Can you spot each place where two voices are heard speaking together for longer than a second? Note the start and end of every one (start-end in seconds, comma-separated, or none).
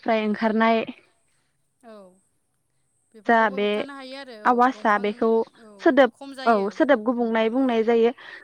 none